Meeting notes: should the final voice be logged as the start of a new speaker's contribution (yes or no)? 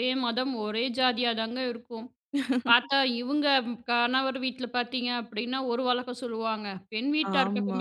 no